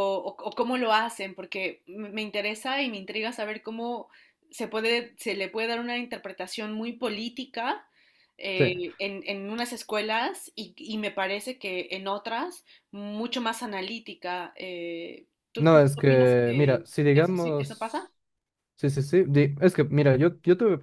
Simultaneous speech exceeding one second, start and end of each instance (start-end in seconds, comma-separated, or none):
15.6-17.9